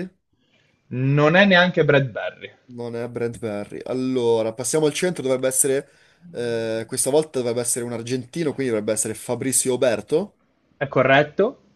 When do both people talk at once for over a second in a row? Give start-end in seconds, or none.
none